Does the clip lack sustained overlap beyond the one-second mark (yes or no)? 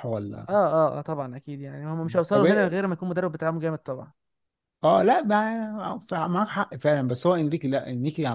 yes